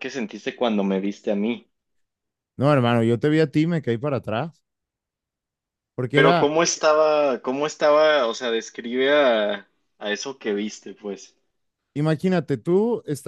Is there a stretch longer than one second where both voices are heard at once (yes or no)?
no